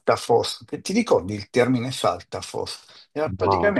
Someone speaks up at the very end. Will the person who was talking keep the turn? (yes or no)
yes